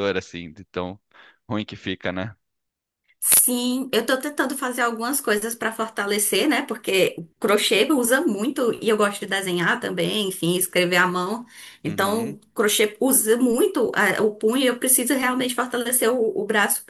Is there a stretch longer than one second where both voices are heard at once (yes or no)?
no